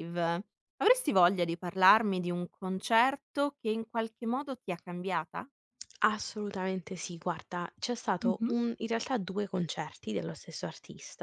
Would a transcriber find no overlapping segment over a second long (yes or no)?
yes